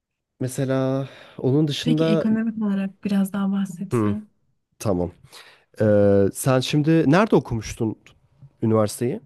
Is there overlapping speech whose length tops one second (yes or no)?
no